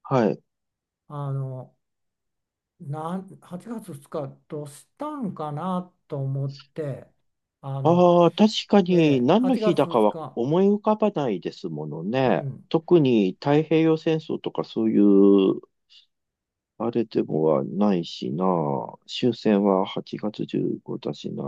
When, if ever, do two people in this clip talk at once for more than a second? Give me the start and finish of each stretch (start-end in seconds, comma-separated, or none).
8.9-10.4